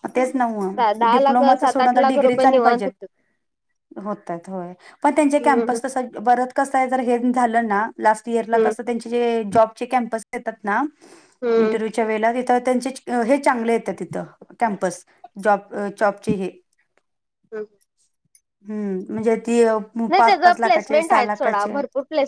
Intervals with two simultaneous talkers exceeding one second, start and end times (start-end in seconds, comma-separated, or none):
1.0-2.9, 20.2-21.7